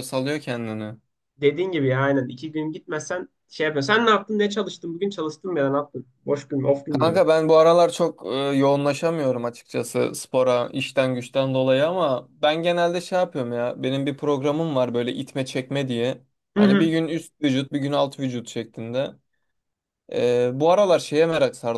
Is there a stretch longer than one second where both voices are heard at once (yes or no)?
no